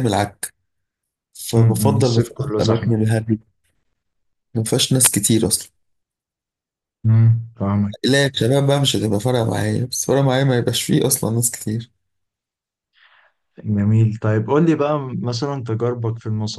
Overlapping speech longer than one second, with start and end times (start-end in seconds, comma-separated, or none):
1.6-3.0